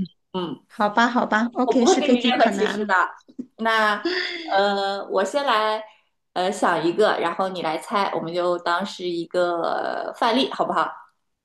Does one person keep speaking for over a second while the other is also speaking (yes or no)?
yes